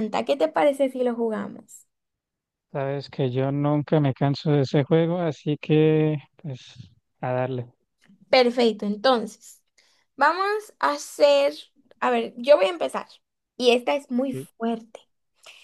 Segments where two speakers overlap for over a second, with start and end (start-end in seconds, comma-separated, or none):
none